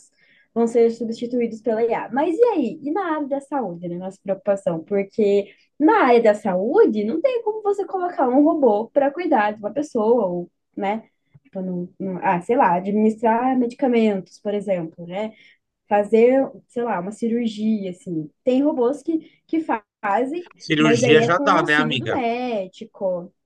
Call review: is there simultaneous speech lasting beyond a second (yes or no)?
yes